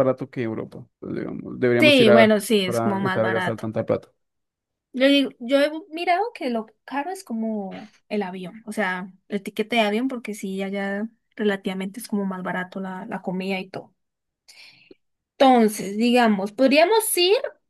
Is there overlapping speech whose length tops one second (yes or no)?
yes